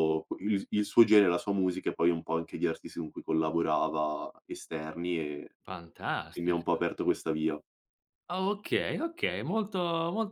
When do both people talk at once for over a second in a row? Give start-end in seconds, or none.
none